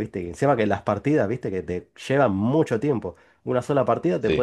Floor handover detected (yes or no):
no